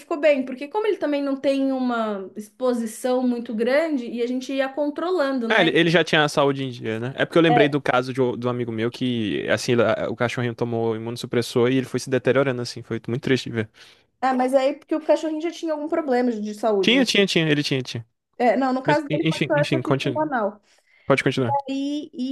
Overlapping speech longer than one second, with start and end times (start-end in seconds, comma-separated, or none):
18.9-20.3